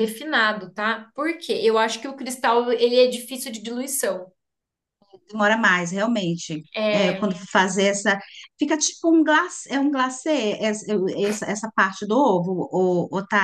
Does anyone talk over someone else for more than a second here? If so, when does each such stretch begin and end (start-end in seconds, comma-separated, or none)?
none